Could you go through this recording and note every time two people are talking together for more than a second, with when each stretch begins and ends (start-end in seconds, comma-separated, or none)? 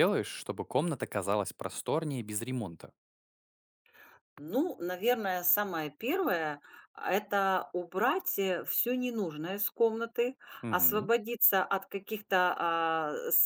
none